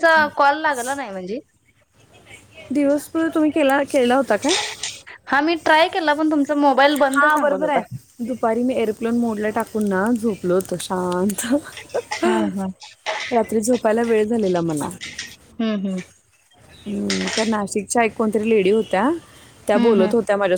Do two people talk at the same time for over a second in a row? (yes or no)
no